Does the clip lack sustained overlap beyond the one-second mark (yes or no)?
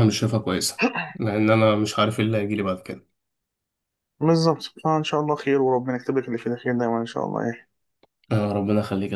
yes